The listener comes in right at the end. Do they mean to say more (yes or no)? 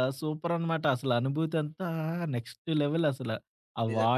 yes